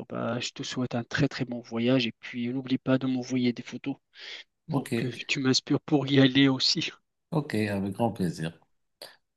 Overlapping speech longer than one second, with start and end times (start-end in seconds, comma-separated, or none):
none